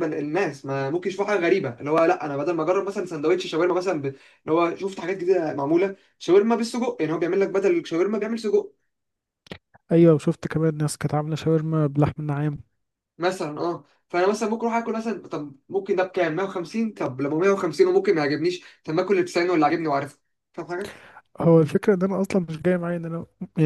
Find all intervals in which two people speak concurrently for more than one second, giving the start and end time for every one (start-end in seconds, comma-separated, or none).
none